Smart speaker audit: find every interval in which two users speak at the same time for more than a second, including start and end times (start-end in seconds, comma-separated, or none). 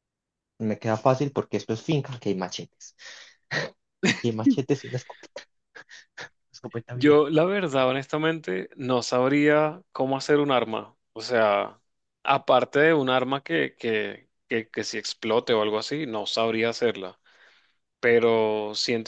none